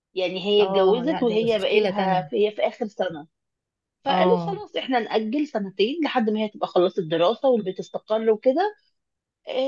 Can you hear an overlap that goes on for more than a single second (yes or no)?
yes